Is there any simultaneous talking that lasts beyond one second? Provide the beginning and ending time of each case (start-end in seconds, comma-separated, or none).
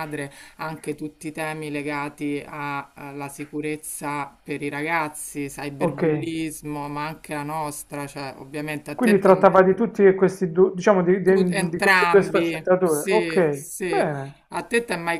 11.2-14.1